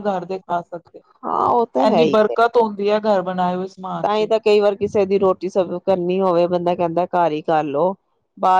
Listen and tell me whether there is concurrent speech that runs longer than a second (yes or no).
no